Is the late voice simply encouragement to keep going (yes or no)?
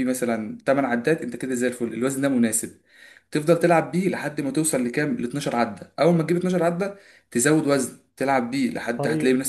yes